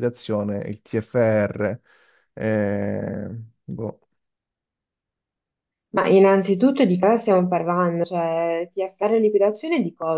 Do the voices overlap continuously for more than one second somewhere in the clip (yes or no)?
no